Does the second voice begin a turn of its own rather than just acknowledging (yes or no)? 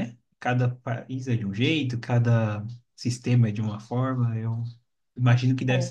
no